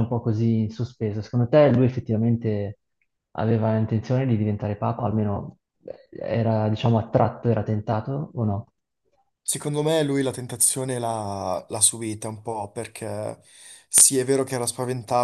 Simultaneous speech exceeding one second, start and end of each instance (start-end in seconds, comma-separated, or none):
none